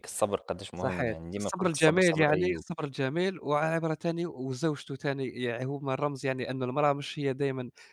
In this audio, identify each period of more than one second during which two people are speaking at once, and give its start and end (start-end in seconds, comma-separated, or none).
0.8-2.6